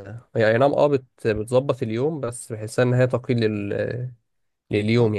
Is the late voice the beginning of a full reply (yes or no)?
yes